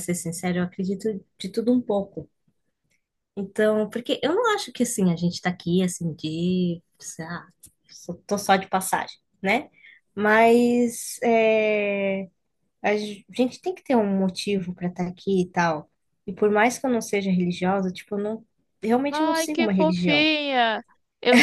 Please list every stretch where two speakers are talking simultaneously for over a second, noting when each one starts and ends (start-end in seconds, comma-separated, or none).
19.1-20.3